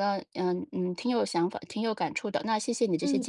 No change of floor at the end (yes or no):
no